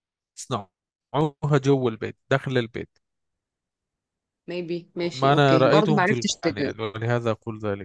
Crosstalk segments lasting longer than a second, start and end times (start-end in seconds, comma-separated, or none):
5.1-6.7